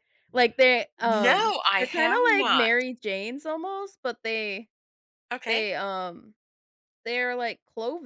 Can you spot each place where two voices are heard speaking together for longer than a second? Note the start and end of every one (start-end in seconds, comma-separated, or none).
1.2-2.7